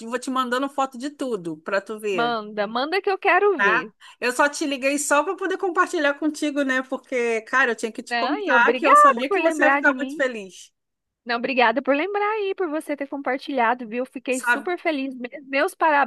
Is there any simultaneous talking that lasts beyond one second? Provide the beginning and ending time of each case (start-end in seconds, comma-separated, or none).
8.1-10.2